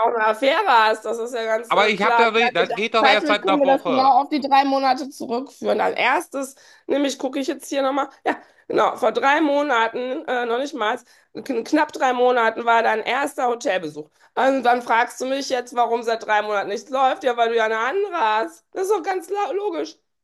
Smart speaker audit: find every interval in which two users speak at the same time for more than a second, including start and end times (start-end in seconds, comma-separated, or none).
1.7-4.2